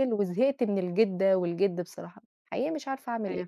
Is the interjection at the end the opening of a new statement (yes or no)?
yes